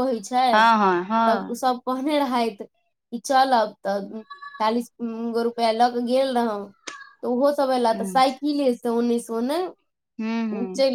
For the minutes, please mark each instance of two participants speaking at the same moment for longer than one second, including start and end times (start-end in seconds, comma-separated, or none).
none